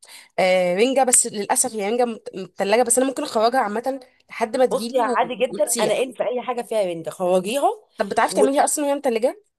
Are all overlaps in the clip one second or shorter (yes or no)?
no